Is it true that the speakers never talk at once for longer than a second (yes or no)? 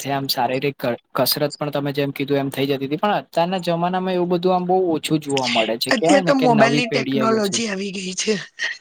no